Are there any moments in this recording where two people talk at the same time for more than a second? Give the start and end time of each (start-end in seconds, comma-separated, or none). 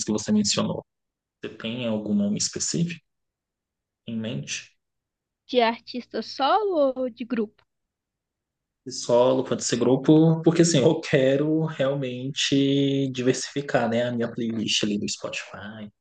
none